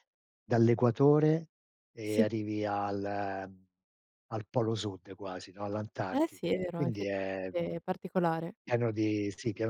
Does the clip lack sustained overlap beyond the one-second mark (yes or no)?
no